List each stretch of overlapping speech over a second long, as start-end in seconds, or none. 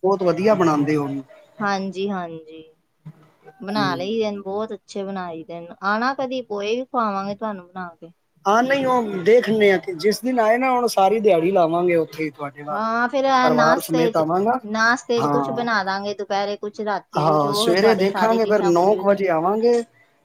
17.2-19.2